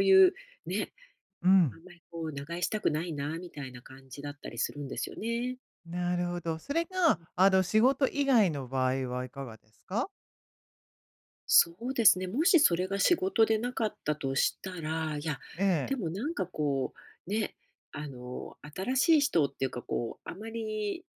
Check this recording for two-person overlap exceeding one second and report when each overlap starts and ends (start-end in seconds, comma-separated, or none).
none